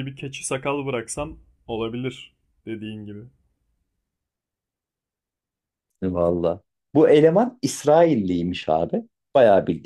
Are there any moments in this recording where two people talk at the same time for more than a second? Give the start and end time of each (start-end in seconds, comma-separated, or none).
none